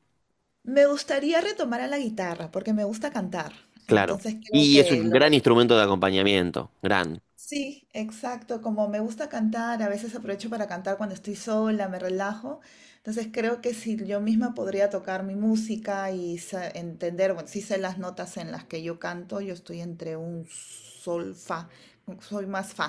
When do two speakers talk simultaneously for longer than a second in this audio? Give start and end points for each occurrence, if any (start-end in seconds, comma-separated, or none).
3.9-5.4